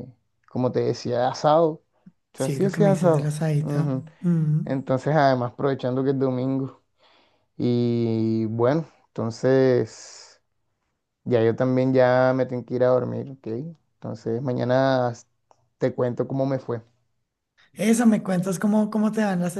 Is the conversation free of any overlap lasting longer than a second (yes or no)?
no